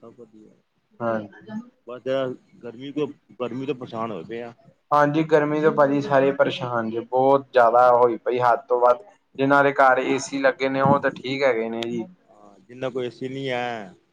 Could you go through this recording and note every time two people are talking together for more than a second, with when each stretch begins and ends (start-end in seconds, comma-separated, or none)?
none